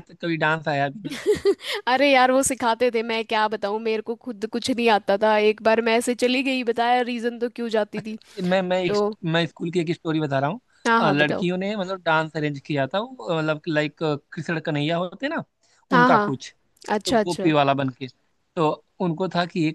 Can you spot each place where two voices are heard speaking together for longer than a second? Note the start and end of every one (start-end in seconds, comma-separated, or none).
none